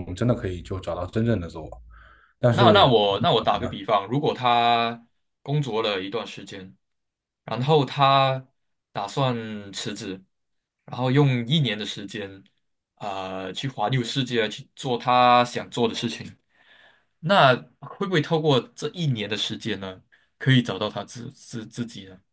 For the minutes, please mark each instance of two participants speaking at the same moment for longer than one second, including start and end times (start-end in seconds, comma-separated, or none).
none